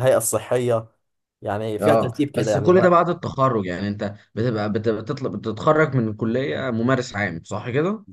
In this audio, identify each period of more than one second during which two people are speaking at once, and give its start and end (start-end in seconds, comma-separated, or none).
1.8-3.0